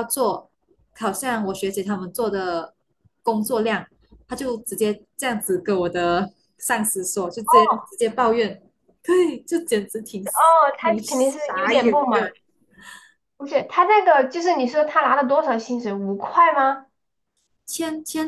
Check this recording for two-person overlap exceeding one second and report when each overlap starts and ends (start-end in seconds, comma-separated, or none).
10.8-12.2